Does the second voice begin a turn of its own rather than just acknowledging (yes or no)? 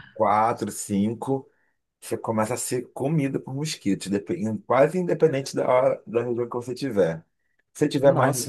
no